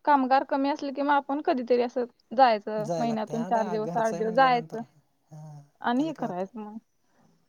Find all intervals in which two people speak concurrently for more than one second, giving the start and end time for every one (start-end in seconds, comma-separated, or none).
2.9-4.8